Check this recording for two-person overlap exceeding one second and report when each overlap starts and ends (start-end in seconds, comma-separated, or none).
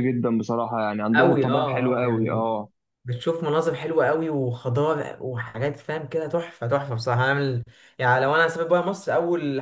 1.1-2.5